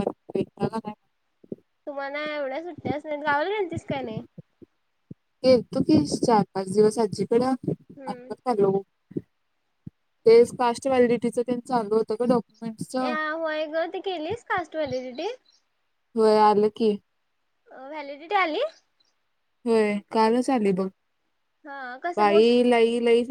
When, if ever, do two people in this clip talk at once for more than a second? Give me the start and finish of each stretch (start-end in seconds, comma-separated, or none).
none